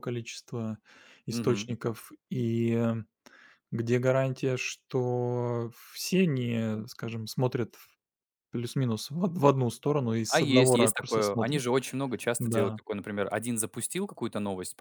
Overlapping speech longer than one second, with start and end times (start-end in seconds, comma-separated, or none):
10.3-11.6